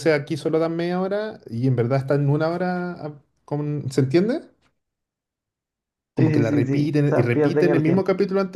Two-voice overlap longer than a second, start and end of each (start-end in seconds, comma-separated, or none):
6.2-8.1